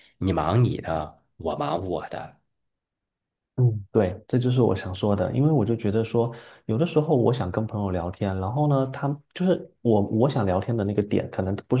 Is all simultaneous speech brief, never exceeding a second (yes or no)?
yes